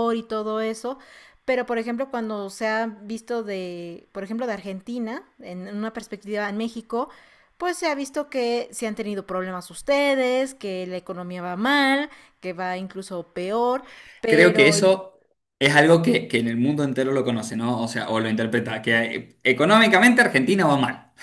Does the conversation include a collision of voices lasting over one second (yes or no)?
no